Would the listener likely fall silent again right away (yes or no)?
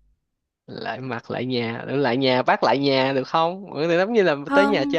no